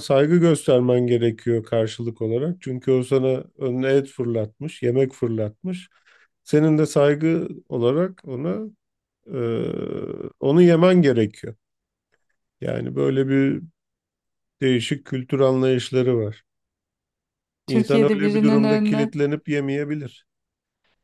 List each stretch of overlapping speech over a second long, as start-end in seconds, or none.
17.7-19.2